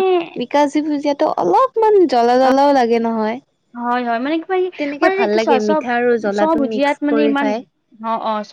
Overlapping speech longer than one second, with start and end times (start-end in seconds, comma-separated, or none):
5.0-7.5